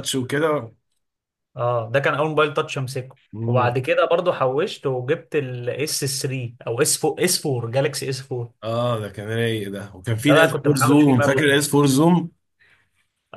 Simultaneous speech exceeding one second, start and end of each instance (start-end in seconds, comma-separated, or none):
10.2-11.4